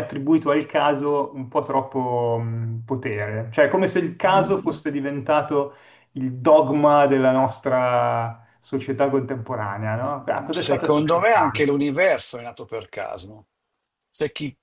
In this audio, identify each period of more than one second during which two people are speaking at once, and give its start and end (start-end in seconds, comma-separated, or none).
10.5-11.7